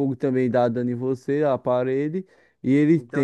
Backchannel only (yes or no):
no